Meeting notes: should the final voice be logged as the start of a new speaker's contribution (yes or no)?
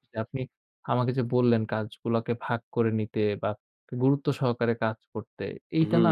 no